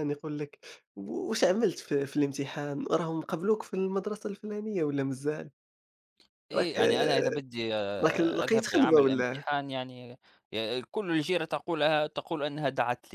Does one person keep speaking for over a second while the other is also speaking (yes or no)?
yes